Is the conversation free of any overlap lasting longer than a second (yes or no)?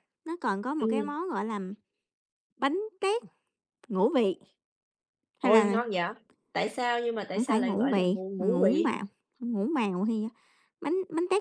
no